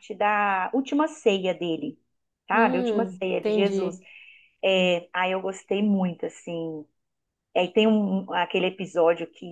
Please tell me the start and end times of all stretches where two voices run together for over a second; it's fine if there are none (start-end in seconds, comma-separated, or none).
2.5-4.0